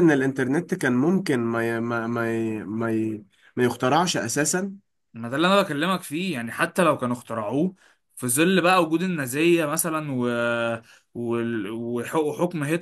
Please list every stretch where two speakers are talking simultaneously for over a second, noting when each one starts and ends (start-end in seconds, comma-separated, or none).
none